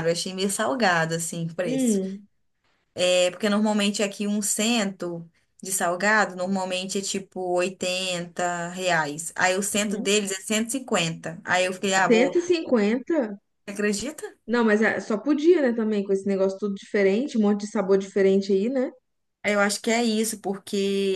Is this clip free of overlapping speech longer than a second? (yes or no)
yes